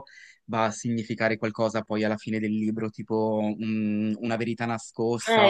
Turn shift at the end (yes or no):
yes